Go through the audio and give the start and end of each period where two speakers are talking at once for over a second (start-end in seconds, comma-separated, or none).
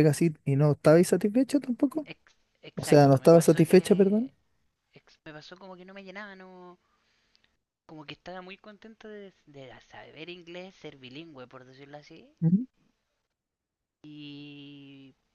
2.8-4.3